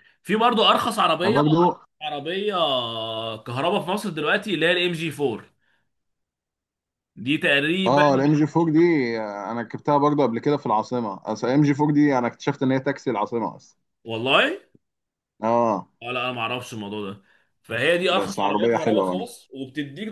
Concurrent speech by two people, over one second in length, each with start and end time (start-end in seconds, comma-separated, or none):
18.1-19.3